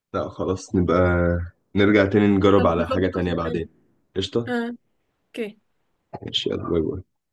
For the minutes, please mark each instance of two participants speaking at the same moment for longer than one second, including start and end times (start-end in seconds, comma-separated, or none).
2.4-3.6